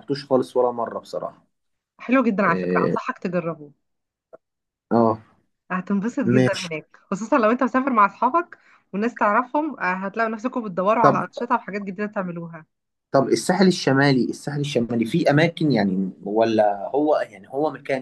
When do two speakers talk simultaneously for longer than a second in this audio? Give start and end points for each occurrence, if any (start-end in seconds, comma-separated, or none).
none